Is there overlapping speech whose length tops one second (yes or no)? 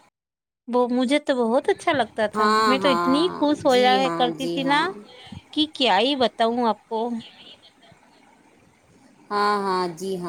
yes